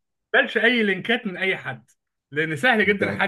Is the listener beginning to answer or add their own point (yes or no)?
no